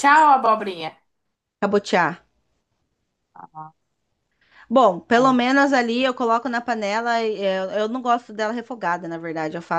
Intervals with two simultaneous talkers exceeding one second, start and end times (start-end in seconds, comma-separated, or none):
none